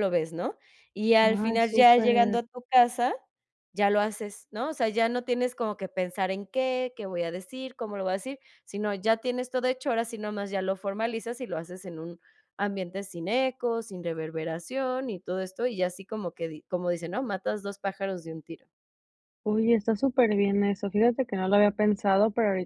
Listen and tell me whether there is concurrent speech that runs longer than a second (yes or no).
yes